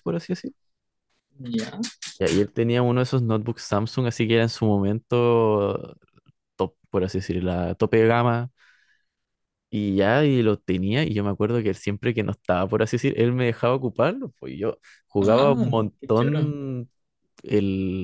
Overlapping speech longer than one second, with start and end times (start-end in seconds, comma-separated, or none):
15.2-16.5